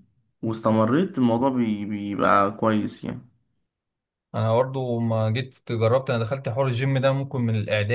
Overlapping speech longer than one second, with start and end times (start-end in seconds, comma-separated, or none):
none